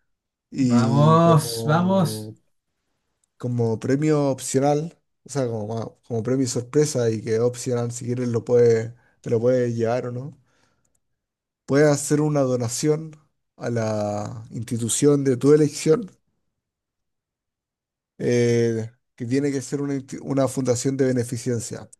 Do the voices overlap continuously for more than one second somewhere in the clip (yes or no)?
yes